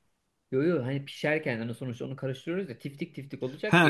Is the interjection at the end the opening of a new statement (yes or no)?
yes